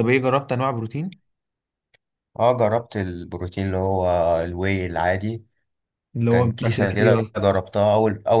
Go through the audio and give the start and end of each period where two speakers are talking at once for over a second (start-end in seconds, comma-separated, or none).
6.3-7.5